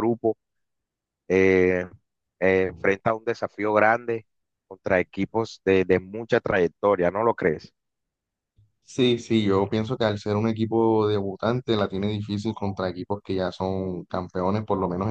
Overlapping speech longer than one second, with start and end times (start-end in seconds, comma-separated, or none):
none